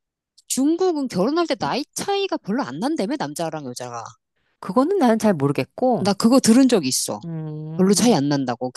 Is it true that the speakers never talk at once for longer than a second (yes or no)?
yes